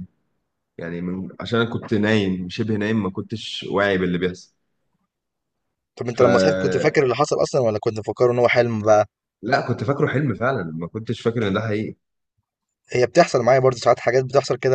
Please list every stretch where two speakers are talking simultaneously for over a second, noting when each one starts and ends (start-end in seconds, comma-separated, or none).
none